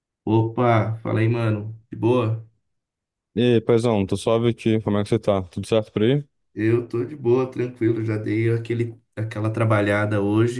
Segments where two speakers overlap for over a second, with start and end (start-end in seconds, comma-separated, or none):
none